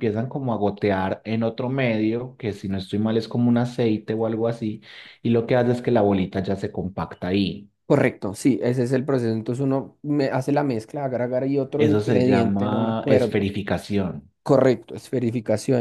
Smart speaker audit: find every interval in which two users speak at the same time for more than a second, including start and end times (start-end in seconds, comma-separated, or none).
11.8-13.4